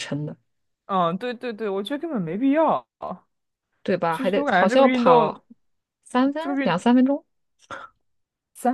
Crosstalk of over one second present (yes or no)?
yes